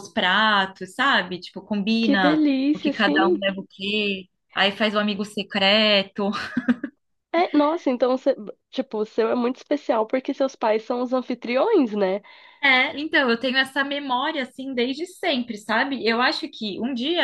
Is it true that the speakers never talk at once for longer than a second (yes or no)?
no